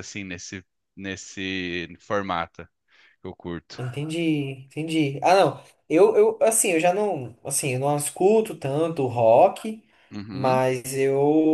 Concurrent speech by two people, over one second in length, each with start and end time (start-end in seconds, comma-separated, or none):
none